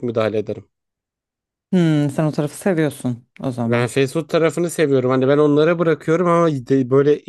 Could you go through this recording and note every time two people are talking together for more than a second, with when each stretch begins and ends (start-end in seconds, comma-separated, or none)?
none